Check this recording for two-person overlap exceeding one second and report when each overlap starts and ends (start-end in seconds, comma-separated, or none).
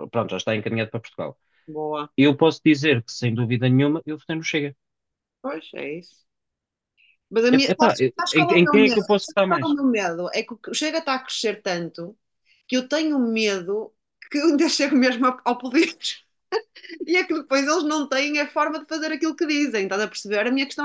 7.5-9.8